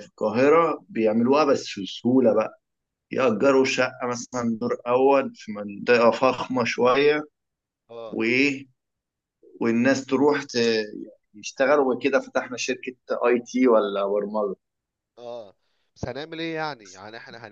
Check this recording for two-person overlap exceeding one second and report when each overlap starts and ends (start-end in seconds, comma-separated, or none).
none